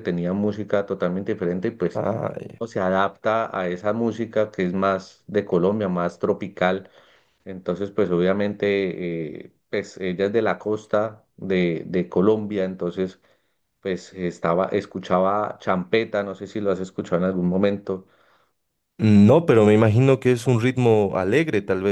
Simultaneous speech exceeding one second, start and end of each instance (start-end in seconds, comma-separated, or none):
none